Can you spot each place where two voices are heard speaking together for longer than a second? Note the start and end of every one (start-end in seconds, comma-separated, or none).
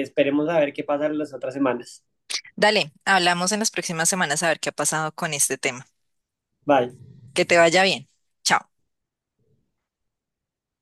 none